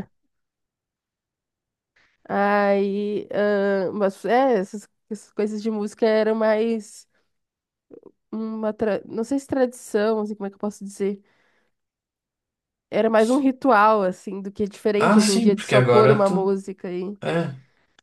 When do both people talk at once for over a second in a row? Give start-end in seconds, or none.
15.0-16.5